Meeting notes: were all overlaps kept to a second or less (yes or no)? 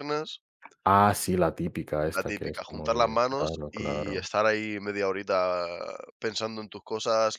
no